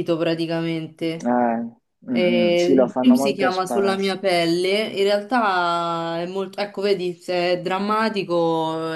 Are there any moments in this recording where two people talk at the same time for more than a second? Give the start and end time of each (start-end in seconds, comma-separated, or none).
2.5-4.1